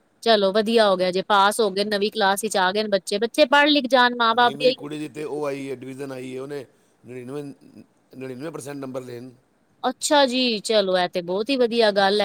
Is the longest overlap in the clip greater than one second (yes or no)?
no